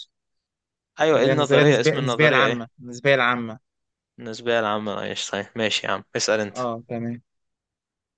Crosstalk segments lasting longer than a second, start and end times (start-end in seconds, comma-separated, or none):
1.1-2.6